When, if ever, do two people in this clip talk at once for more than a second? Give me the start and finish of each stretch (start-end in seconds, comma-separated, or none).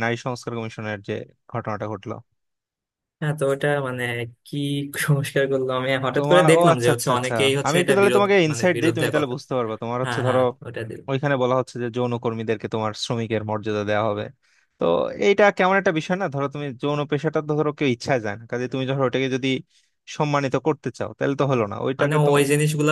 6.2-9.3